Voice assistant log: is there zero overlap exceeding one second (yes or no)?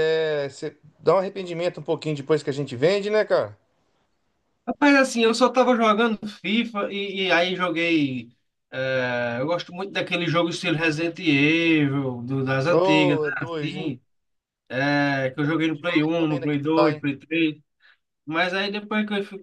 no